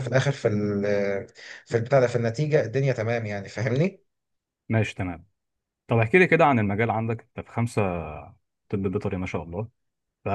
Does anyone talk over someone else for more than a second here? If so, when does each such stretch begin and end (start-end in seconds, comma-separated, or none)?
none